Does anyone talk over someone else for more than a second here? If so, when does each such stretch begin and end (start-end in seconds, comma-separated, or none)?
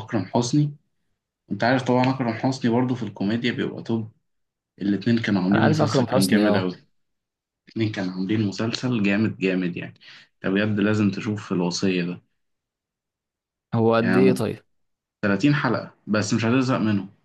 5.5-6.7